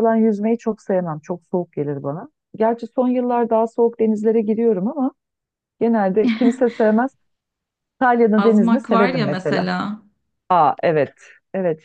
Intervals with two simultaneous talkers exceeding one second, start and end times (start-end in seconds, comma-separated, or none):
8.4-9.7